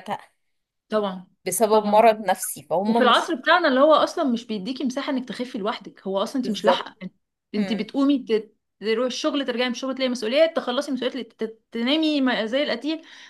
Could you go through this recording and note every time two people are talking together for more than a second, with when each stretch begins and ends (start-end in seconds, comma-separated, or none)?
none